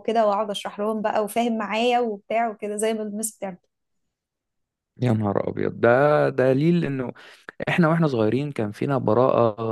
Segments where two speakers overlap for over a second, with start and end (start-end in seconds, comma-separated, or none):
none